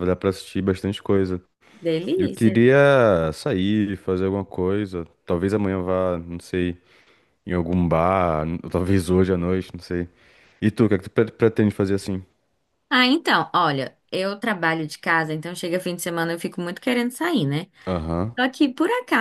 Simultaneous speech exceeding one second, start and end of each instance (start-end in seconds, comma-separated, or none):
none